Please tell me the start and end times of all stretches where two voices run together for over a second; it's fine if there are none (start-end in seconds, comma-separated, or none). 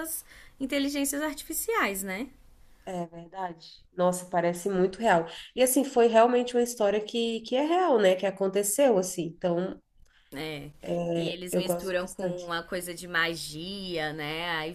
11.2-12.5